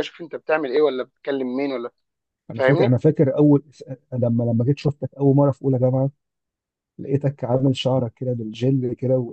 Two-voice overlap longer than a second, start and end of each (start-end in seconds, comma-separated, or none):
none